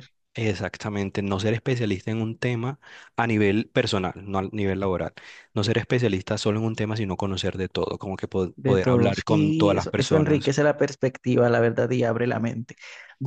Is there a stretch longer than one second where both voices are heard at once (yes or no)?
yes